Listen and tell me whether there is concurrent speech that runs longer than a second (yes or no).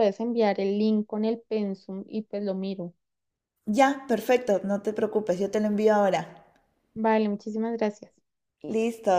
no